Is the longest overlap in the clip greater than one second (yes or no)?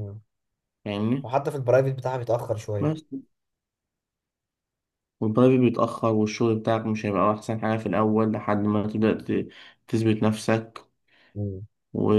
no